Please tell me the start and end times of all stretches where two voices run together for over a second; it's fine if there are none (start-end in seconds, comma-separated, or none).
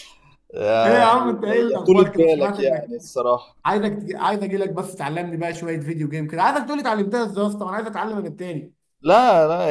0.8-2.9